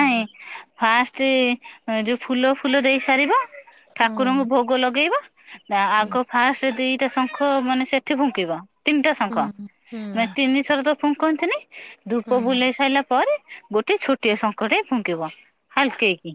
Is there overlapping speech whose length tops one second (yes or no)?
no